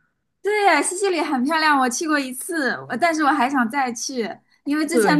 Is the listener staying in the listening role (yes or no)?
yes